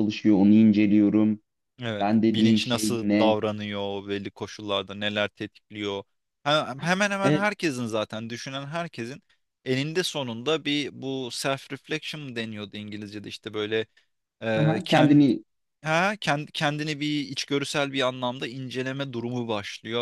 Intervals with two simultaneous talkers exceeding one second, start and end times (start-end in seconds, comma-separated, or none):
2.0-3.4